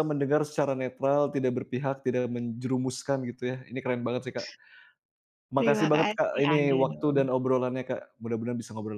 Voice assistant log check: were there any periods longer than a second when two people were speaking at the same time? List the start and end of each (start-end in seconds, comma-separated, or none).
5.6-7.2